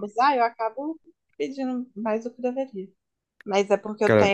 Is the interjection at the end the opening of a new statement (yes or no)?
no